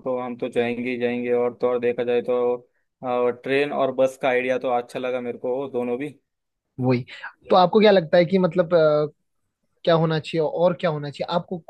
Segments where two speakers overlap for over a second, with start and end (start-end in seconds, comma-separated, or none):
none